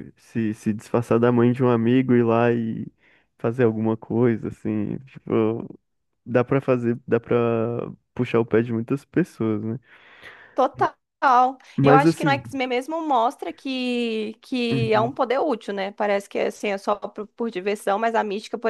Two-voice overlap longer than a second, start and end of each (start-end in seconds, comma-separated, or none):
none